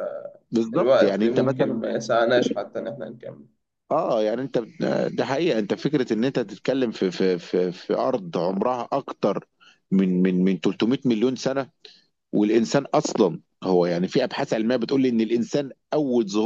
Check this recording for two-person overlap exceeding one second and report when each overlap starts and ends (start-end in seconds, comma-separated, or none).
0.5-1.8